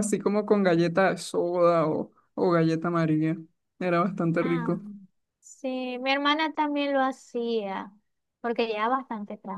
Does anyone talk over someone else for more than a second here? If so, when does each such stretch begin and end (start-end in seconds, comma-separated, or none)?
none